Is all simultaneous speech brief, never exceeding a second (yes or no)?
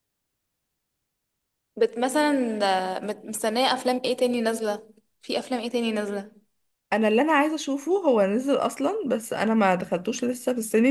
yes